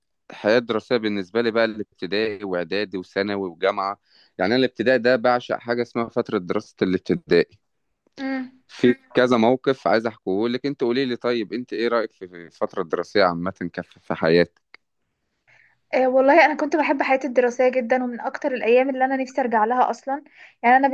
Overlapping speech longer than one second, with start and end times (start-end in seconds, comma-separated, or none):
none